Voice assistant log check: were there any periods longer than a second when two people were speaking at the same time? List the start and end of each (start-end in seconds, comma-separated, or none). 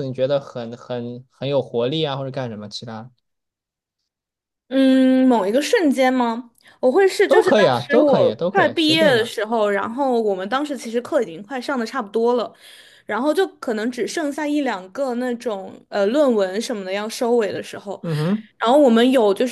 7.2-9.3